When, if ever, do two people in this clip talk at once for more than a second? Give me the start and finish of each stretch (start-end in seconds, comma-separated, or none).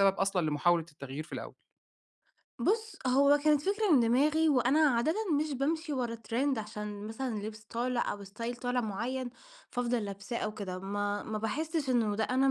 none